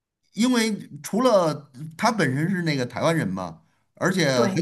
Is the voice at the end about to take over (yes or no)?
no